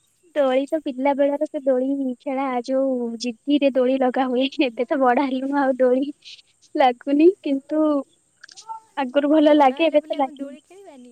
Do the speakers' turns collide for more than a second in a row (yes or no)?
yes